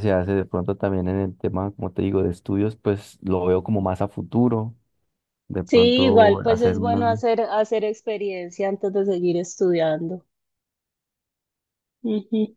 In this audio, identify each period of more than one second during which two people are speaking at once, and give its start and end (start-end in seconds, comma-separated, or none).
5.6-7.2